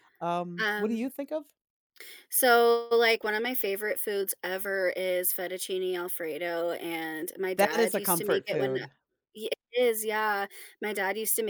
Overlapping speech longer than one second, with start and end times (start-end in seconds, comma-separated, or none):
7.6-8.8